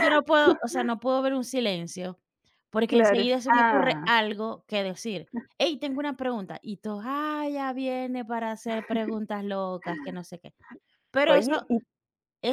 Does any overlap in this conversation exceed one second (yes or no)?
yes